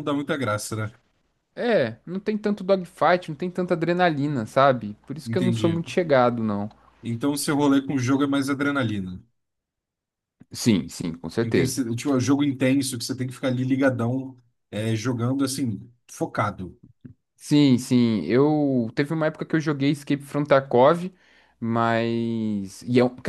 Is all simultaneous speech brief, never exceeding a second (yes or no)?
yes